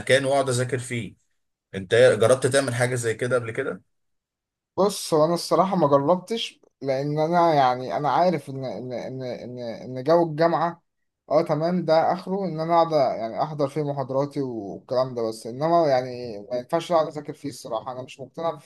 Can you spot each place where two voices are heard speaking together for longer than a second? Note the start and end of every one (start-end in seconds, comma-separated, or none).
none